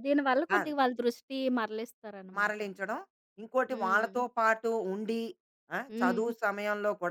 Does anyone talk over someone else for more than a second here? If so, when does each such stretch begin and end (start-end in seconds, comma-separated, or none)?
none